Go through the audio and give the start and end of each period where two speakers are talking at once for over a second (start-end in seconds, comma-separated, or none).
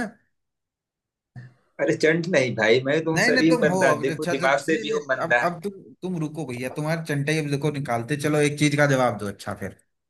3.1-5.4